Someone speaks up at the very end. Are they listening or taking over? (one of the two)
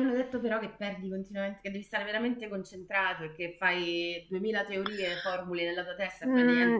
taking over